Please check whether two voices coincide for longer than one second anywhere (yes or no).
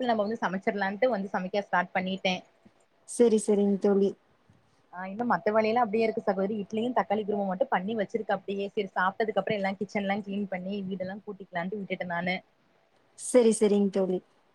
no